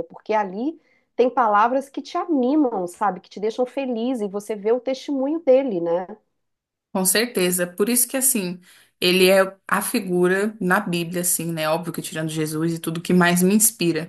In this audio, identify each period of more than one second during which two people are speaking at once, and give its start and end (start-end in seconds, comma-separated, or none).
none